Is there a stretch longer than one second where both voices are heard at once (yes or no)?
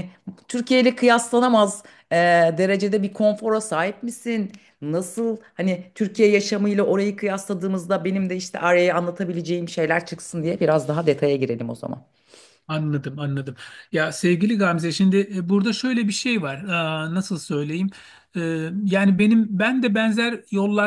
no